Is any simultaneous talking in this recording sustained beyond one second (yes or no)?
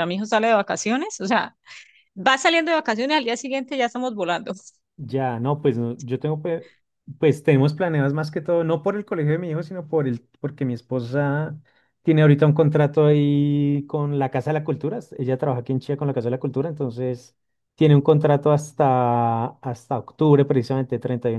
no